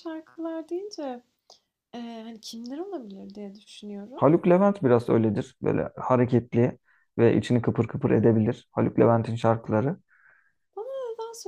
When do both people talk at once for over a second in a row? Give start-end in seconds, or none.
none